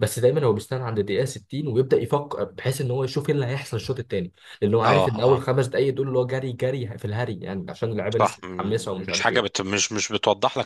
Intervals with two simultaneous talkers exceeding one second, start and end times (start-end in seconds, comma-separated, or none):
8.2-9.6